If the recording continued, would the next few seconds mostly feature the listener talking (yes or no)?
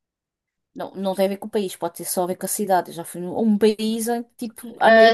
yes